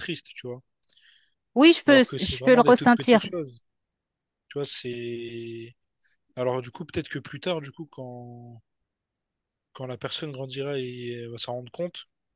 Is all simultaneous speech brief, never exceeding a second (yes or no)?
no